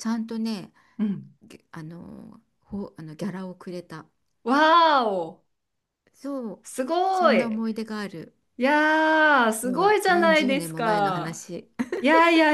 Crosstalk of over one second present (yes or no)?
yes